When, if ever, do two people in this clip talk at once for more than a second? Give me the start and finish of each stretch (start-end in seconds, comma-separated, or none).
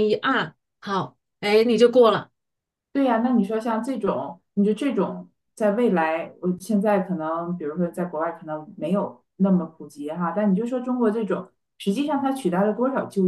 none